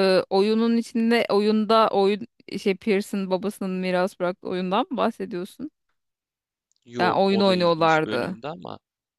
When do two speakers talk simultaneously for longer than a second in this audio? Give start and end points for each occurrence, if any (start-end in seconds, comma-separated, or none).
7.0-8.4